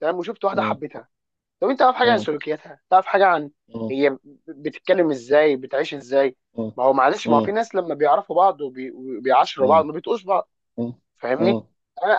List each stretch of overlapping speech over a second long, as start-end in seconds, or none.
none